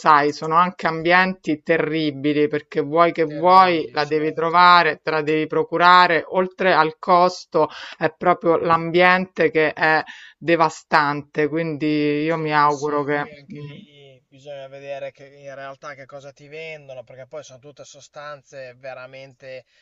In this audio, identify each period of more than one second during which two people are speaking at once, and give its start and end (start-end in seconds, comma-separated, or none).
3.2-4.7, 12.2-13.8